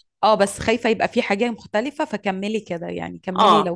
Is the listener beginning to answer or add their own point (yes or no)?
yes